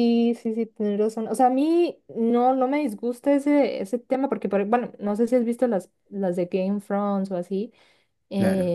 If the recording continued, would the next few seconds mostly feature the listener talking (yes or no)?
no